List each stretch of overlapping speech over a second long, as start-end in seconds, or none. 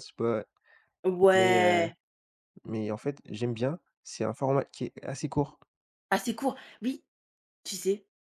none